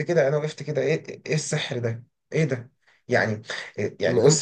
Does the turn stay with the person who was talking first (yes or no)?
yes